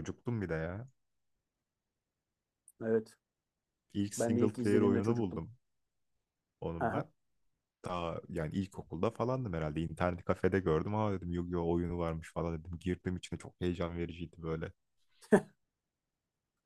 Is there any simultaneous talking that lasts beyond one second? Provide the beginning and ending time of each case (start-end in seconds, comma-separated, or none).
4.2-5.4